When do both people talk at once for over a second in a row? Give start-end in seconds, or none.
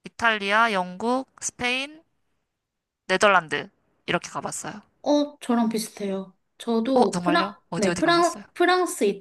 6.9-8.4